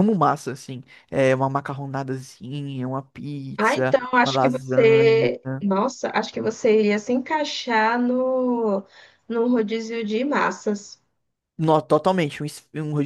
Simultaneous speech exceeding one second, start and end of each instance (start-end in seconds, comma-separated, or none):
3.6-5.3